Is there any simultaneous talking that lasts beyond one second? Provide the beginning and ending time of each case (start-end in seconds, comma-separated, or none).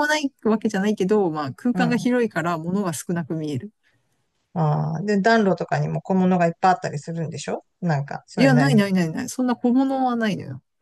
none